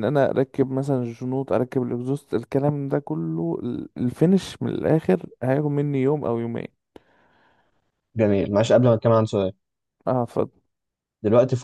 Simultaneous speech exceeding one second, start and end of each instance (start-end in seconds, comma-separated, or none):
none